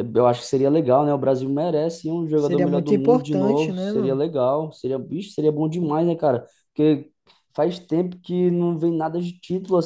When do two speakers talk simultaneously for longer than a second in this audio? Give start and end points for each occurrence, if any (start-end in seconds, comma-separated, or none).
2.4-4.2